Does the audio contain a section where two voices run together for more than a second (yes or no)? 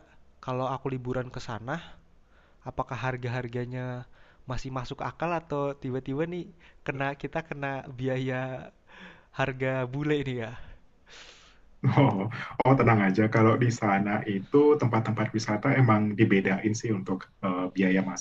no